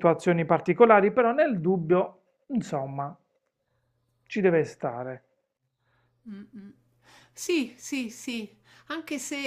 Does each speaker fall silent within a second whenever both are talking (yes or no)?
yes